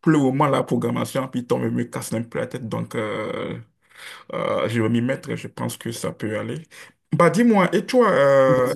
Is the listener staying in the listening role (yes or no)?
yes